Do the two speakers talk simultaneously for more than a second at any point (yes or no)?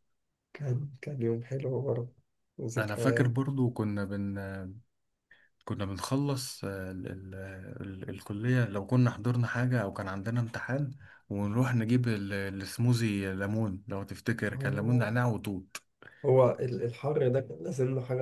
no